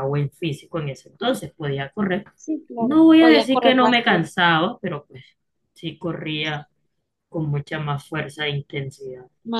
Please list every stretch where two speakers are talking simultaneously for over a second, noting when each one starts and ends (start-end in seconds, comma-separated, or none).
2.8-4.3